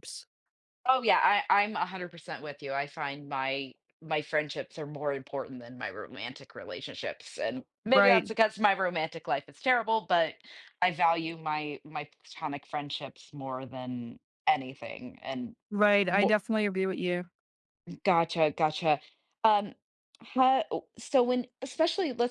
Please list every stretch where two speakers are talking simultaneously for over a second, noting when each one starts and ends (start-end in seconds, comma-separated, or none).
none